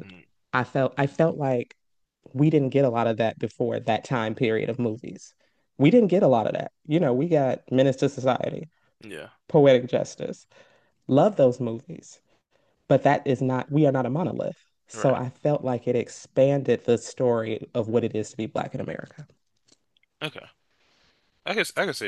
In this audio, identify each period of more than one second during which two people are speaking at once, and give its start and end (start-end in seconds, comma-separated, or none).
none